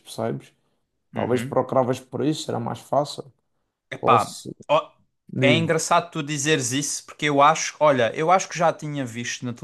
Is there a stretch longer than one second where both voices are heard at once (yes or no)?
no